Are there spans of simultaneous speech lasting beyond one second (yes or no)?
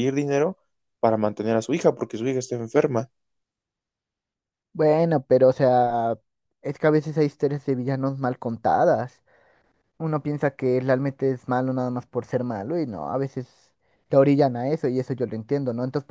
no